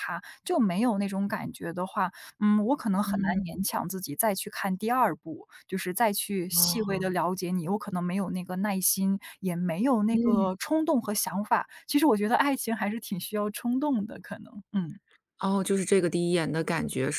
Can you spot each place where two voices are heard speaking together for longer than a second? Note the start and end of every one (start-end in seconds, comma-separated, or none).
none